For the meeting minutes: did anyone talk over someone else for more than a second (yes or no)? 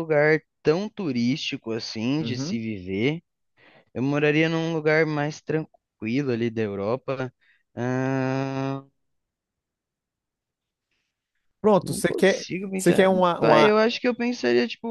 yes